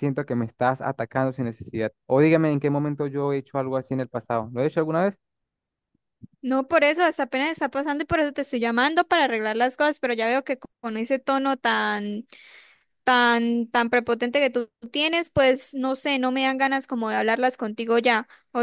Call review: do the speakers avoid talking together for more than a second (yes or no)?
yes